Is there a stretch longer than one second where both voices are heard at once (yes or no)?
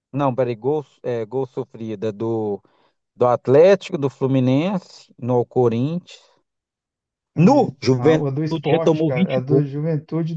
yes